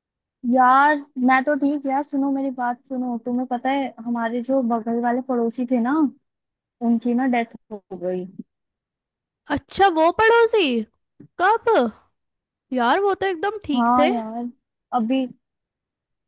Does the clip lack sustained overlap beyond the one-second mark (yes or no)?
yes